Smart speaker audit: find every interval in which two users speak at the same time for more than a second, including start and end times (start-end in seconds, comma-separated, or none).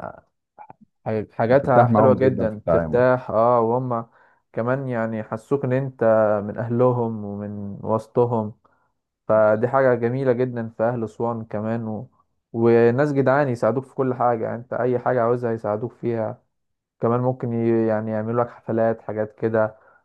1.5-3.0